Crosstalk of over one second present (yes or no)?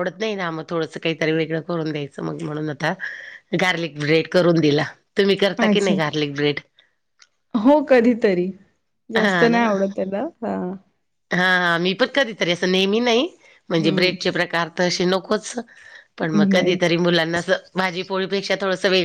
no